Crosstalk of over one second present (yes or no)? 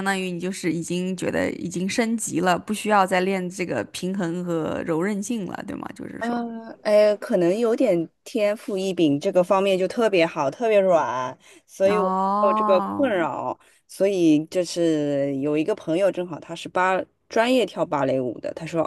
yes